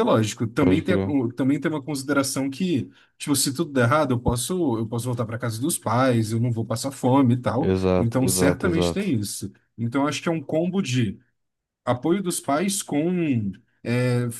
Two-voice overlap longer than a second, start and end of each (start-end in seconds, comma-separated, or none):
7.6-9.2